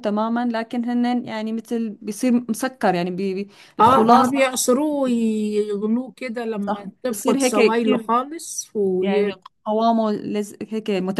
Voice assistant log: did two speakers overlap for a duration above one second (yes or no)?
yes